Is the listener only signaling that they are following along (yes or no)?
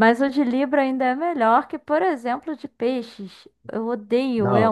no